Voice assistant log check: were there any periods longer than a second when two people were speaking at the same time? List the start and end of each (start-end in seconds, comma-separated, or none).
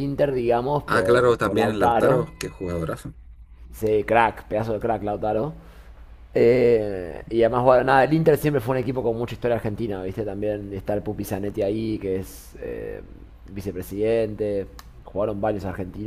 0.9-2.3